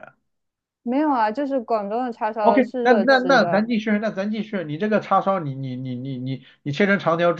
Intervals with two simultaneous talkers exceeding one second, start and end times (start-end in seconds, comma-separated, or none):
2.4-3.7